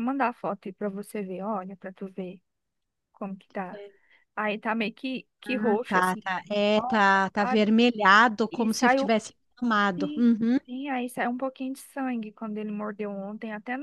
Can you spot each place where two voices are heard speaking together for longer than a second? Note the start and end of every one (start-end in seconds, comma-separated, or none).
5.4-7.6